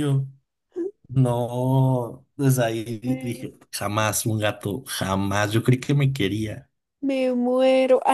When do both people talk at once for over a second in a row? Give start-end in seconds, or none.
none